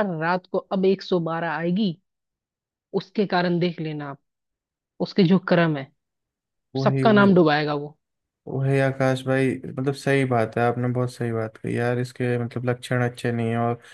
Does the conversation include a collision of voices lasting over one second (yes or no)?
no